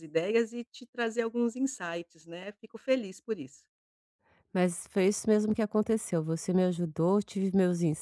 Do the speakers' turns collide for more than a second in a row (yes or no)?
no